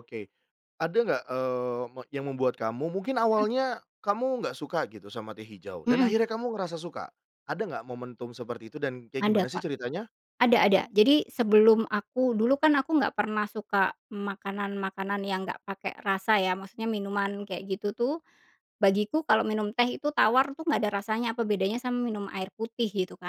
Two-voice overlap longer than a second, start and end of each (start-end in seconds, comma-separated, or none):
none